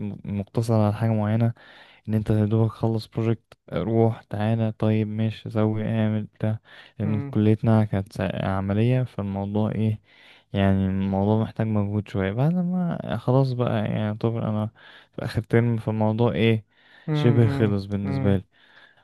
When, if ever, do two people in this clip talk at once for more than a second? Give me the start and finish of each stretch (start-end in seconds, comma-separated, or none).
17.1-18.4